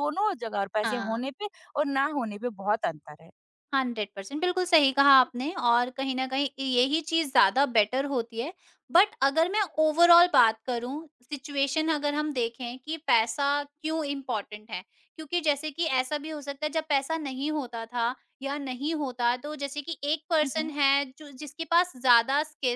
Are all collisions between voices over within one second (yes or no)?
yes